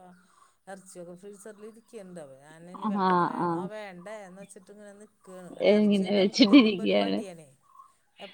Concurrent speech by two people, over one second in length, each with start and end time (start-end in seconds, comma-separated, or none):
5.8-7.1